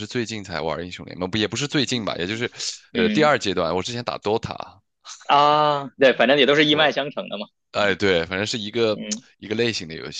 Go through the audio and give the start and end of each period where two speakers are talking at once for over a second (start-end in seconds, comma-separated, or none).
none